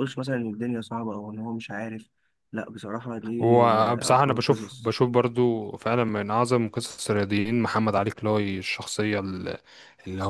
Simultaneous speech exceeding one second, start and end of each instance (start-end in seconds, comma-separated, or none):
3.4-4.9